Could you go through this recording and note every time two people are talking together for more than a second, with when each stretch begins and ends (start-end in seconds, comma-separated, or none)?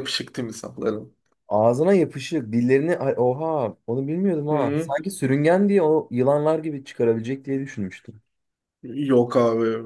none